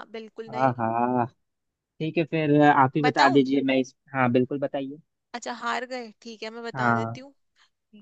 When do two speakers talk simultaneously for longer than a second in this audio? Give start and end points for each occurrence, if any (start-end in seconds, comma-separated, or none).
none